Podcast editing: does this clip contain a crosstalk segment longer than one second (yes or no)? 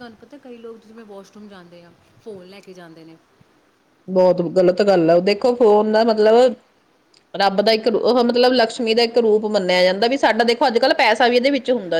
no